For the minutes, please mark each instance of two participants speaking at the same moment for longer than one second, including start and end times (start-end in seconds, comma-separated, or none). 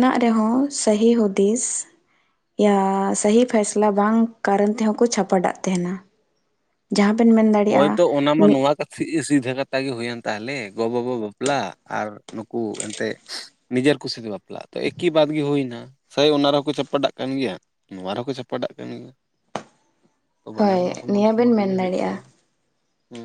20.6-22.2